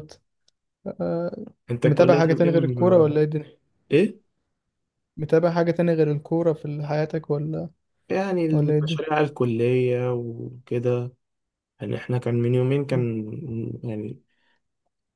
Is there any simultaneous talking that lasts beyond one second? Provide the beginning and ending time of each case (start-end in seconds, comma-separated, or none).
1.8-3.1